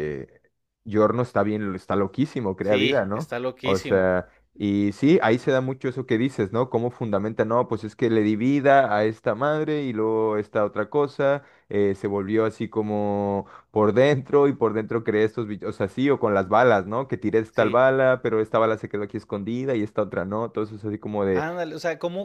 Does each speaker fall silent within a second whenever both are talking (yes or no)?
no